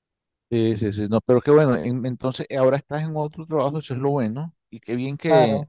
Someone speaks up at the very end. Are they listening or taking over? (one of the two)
taking over